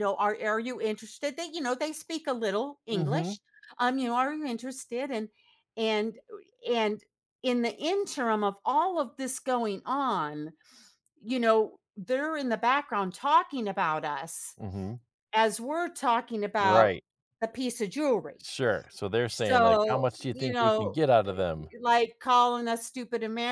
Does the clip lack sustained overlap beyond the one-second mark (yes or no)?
no